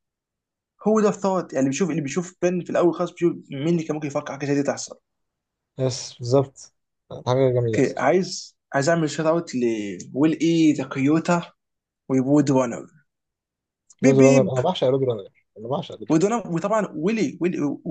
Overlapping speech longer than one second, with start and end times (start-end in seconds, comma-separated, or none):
none